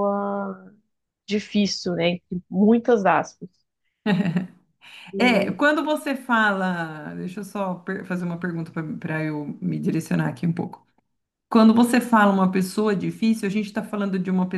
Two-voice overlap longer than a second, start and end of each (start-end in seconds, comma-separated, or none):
none